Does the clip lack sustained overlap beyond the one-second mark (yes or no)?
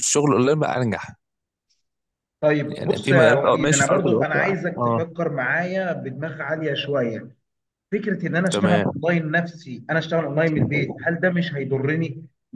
no